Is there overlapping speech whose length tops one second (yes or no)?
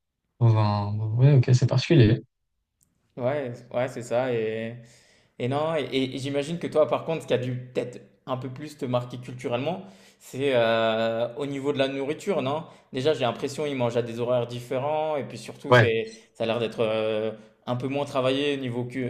no